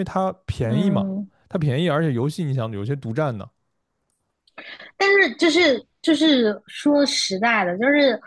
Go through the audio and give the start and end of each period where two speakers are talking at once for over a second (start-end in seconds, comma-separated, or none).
none